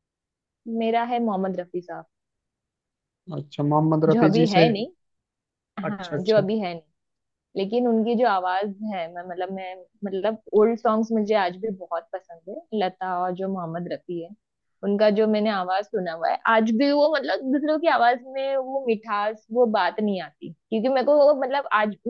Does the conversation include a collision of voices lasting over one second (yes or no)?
no